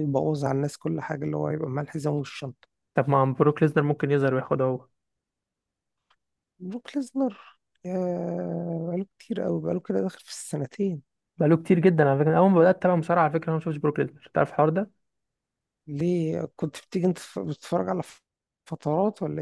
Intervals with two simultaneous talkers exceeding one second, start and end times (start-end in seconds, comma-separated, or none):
none